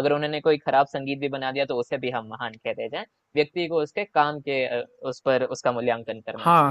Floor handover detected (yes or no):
yes